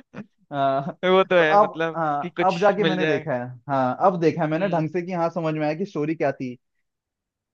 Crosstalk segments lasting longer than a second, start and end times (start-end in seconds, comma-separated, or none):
1.4-3.3